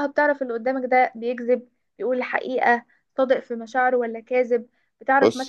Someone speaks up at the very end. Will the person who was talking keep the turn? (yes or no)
yes